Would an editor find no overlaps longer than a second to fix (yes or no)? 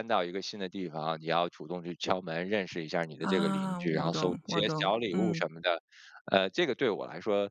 no